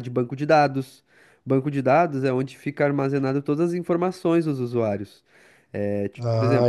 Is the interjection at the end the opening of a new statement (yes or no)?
yes